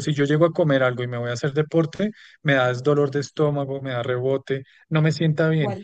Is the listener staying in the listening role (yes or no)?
yes